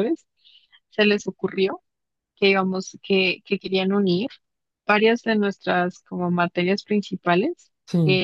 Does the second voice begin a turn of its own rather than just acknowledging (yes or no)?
no